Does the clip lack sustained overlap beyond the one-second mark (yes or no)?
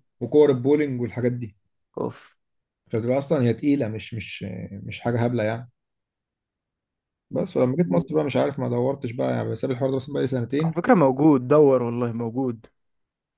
yes